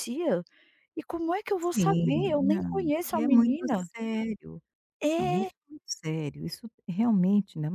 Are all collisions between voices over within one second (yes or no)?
no